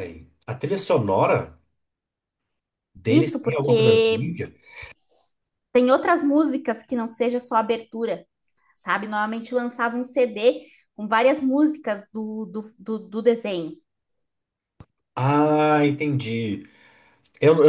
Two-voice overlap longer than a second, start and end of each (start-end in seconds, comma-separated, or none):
3.1-4.3